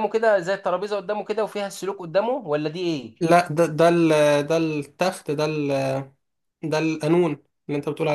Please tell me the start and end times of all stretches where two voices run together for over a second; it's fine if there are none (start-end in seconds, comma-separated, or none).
none